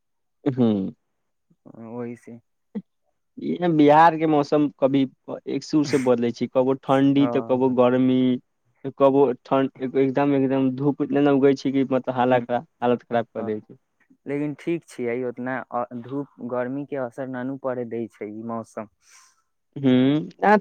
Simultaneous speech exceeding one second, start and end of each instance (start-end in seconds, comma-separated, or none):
none